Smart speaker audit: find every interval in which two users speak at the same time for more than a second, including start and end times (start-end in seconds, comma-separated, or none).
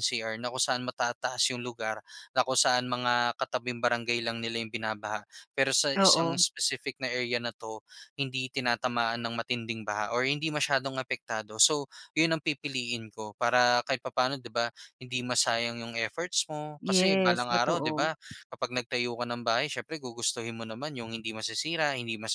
16.8-18.1